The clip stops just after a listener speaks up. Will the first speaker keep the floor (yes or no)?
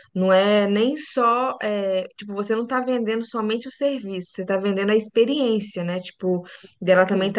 yes